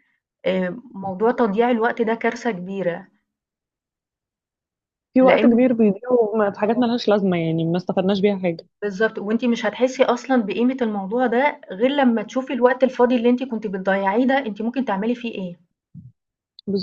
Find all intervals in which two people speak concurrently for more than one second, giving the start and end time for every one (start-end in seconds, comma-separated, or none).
none